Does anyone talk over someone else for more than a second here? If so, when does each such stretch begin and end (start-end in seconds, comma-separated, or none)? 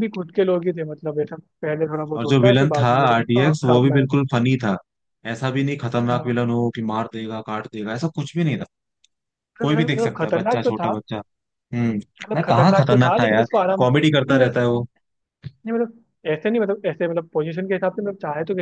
2.1-4.0, 9.6-10.9, 12.3-14.6